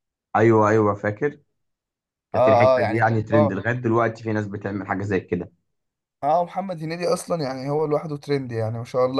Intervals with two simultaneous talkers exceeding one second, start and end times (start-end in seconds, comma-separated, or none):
2.3-3.6